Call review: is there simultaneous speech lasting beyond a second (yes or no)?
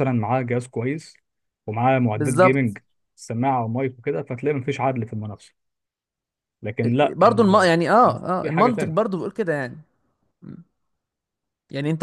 yes